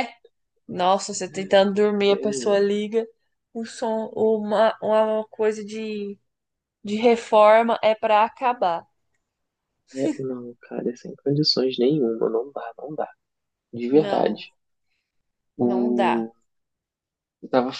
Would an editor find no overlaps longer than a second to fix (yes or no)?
yes